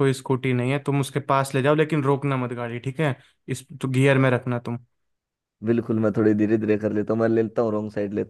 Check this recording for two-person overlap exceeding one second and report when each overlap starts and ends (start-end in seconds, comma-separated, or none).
none